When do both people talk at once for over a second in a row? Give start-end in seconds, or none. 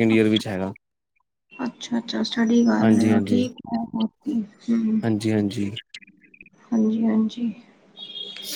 none